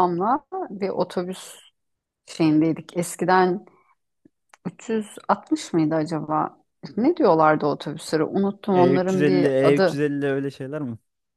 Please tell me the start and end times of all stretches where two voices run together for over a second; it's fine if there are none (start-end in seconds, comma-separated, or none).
8.7-10.0